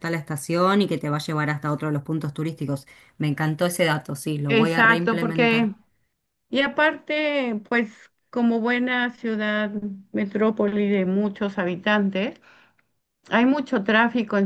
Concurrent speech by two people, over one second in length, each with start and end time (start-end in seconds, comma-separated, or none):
4.5-5.7